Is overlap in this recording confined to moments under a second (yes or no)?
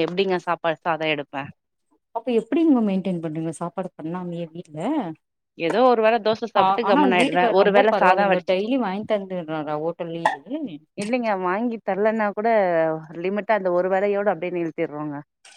no